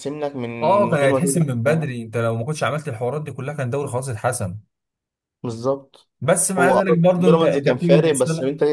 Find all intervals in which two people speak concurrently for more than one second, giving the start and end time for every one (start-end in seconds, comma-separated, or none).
0.6-1.9, 6.6-8.2